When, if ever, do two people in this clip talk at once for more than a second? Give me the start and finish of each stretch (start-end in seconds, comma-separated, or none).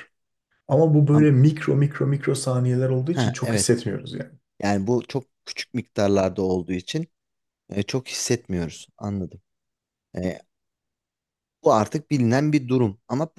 none